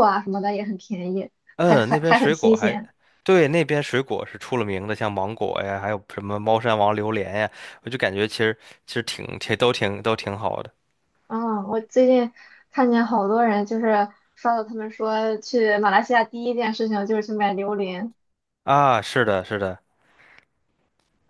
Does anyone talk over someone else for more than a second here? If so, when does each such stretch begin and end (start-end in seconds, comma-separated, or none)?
1.6-2.8